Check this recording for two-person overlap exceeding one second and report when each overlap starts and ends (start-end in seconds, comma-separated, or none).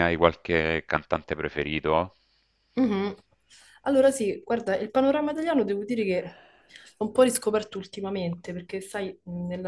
none